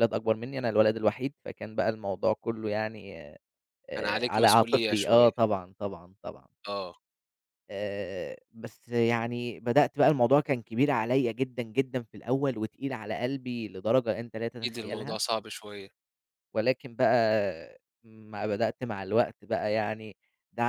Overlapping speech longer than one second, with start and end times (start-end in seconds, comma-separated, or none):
4.0-5.3